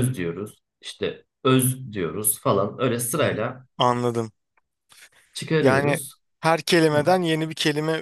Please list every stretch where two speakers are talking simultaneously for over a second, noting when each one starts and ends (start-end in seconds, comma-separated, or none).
none